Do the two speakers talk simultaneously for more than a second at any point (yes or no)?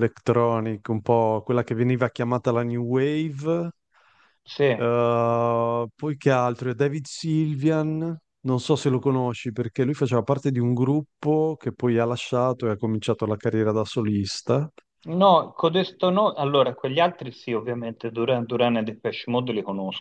no